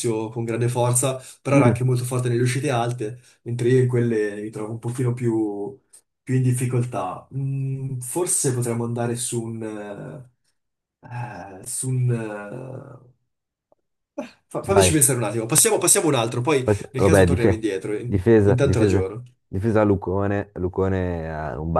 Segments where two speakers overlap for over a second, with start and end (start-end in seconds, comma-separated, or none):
16.6-19.1